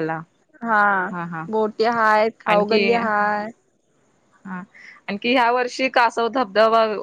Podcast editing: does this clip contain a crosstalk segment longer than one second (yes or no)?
no